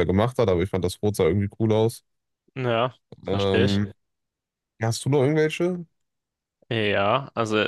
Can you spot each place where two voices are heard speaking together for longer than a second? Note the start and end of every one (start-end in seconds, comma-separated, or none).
none